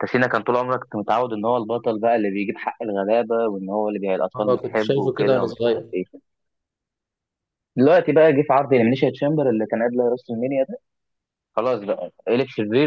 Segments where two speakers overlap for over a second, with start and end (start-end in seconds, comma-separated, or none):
4.4-5.9